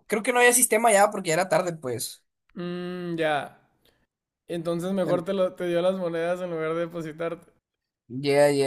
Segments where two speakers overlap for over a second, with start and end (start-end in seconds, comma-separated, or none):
none